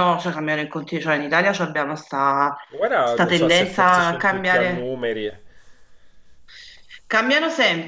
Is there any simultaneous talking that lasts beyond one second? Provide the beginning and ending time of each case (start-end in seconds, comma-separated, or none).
3.0-4.9